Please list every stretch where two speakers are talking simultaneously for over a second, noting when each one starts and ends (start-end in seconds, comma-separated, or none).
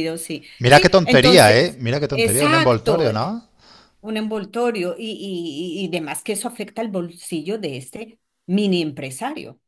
0.6-3.4